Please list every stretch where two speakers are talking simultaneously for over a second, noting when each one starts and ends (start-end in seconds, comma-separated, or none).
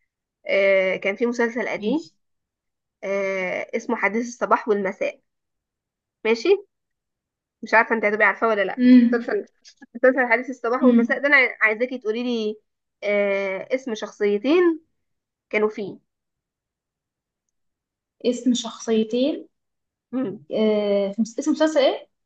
none